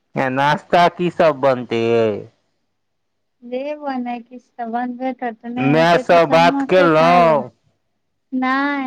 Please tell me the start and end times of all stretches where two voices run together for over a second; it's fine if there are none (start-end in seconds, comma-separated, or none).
5.7-7.5